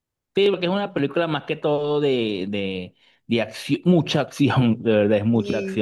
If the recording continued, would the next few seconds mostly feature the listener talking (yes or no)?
no